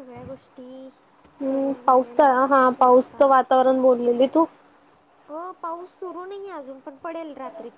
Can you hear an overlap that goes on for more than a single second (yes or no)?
yes